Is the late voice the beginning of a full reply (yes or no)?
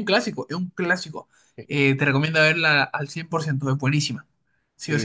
yes